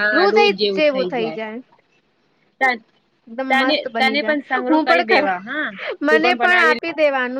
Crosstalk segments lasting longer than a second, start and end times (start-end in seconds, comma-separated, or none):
3.5-5.2